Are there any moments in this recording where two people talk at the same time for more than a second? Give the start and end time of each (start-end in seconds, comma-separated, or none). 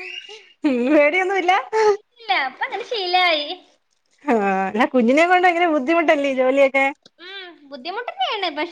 none